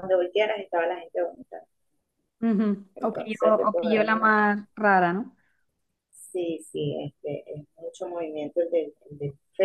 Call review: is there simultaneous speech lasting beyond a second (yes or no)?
yes